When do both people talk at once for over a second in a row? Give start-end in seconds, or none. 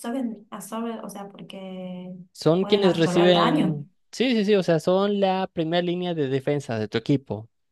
2.6-3.8